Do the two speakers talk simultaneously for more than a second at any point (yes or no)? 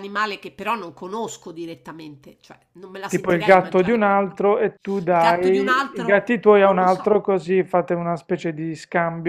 yes